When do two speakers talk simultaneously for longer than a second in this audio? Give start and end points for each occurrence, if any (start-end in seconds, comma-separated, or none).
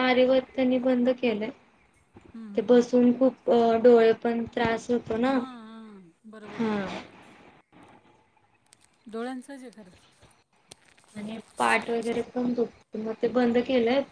none